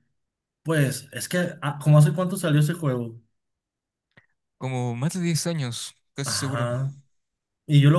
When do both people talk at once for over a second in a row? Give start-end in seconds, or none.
none